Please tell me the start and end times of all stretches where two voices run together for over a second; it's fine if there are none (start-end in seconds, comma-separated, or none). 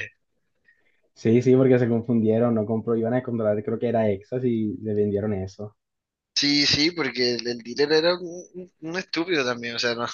none